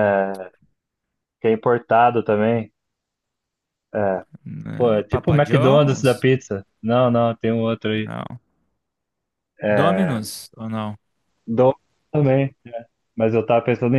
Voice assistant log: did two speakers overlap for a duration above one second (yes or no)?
yes